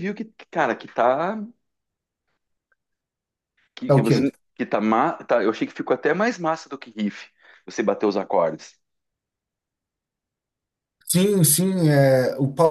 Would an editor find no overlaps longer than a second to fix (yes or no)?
yes